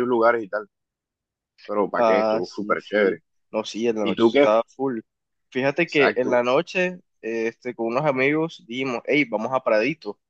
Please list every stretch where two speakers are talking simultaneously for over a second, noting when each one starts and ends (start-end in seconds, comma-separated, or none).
1.9-3.2